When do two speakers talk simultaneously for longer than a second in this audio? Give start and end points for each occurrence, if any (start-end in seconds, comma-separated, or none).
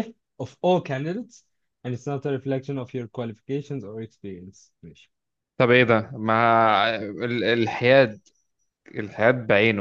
none